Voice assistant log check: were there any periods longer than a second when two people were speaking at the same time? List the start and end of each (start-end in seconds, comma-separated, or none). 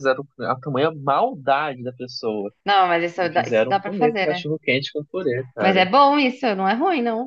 3.2-4.4